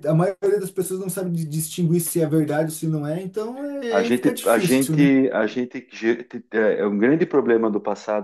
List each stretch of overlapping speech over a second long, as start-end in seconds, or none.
3.9-5.1